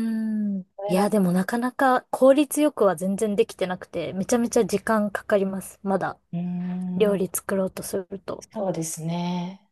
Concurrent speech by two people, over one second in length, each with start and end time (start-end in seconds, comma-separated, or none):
none